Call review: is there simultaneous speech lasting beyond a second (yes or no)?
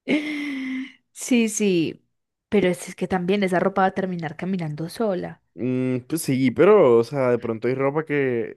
no